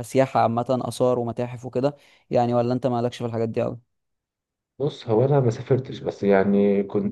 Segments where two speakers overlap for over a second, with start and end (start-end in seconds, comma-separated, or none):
none